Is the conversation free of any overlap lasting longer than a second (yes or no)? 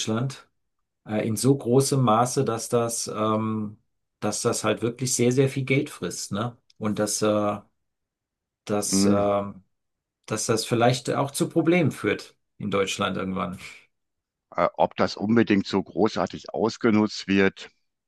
yes